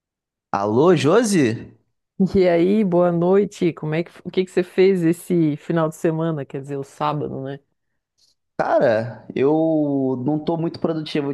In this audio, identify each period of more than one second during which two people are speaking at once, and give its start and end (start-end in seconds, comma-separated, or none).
none